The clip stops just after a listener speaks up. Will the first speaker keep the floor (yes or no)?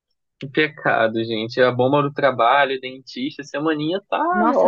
no